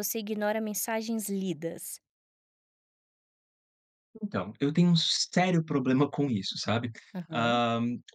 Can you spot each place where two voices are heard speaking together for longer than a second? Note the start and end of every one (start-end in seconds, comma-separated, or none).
none